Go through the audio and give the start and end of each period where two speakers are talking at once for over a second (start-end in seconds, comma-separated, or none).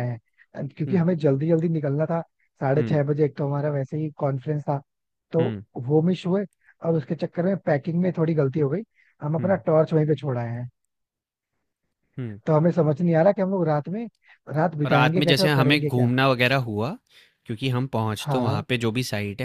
14.9-16.1